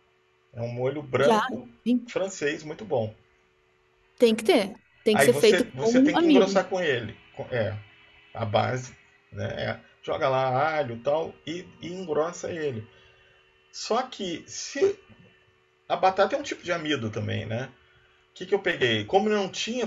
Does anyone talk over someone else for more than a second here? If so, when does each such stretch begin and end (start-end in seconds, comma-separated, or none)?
5.1-6.7